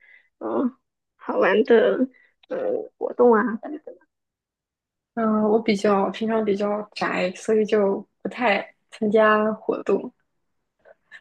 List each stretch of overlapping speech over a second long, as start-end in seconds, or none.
none